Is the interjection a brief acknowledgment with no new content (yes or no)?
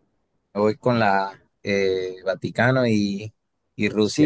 no